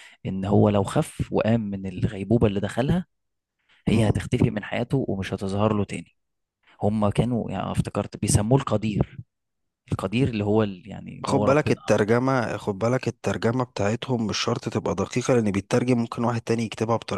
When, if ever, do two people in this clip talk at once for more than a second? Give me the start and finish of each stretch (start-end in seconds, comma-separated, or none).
none